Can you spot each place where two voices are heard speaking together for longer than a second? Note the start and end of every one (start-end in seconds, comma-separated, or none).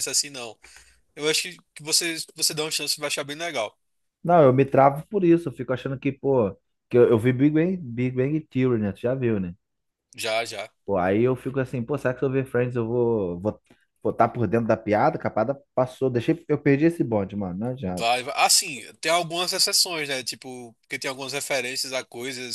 none